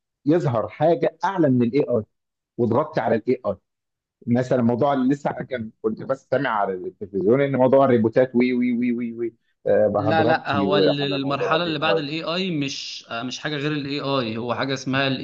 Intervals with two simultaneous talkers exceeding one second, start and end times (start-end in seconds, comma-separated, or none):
10.0-12.0